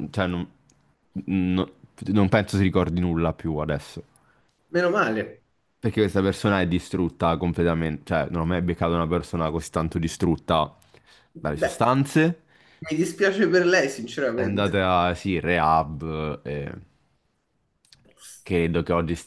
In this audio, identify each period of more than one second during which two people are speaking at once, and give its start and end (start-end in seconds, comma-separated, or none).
none